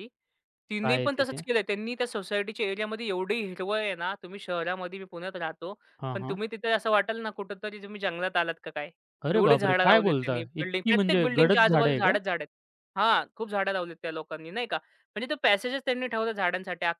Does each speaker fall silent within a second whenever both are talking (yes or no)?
no